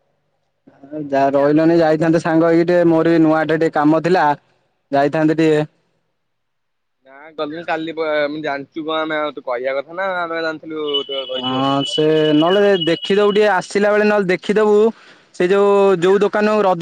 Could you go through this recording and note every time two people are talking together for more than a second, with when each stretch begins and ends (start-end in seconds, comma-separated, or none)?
none